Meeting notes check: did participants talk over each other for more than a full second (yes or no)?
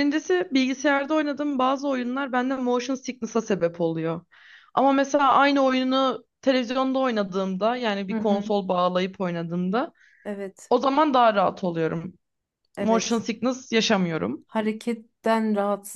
no